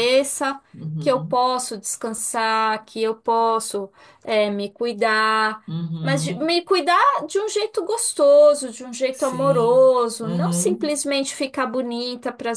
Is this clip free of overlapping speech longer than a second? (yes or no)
no